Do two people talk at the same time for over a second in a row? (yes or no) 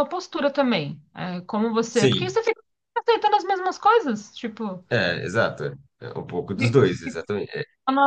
no